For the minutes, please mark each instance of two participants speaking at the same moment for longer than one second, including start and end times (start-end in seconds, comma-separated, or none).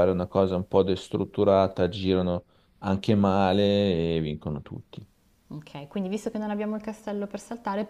none